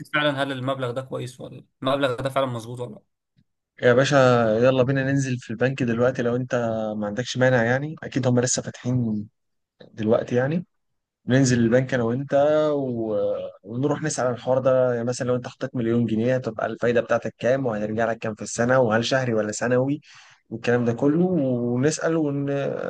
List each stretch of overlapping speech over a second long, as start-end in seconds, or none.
none